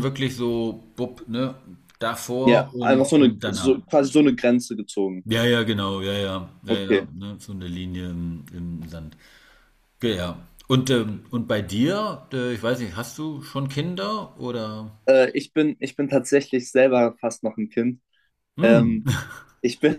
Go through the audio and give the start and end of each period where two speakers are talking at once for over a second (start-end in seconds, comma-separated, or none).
2.4-3.8